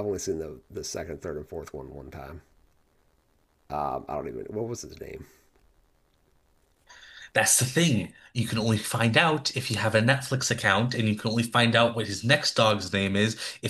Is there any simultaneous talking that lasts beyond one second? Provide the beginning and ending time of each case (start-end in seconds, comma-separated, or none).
none